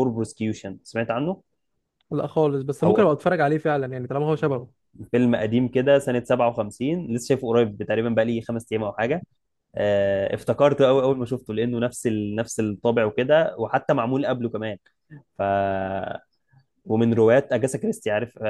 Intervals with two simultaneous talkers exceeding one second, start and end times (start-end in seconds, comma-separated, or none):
none